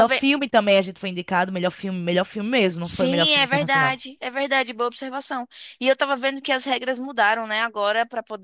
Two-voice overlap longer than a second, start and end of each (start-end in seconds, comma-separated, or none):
2.8-4.0